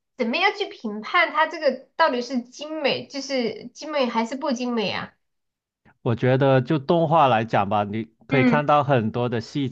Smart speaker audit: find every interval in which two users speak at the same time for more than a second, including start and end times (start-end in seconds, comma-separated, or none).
none